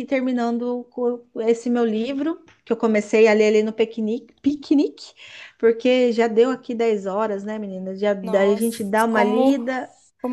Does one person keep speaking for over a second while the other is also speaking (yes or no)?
yes